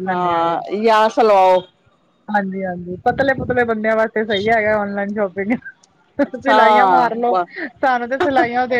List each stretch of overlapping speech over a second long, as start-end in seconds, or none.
none